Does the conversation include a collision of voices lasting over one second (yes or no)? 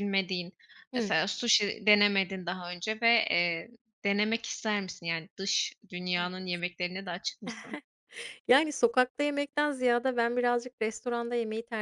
no